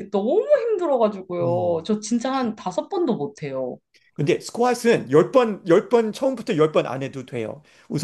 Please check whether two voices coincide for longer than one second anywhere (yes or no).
no